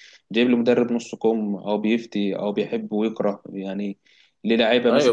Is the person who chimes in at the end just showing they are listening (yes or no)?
yes